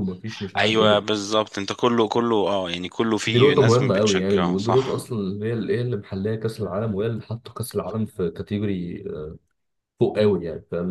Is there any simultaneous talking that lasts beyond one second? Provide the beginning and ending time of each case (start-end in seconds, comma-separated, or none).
3.3-5.0